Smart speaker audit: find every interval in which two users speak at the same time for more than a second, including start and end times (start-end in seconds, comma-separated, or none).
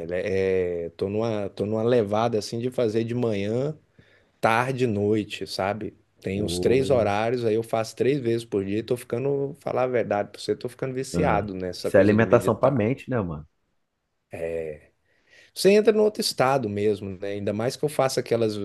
11.1-12.8